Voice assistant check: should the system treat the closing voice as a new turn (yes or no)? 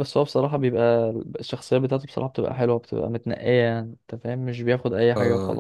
yes